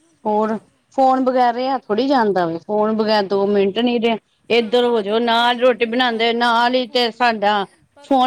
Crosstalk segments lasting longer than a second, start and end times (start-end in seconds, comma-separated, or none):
4.6-7.2